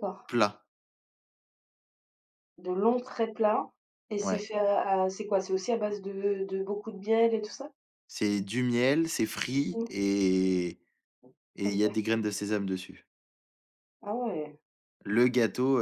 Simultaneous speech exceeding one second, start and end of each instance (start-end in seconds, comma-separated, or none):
none